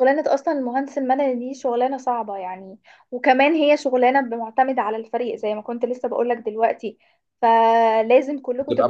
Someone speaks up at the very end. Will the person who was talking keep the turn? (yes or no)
no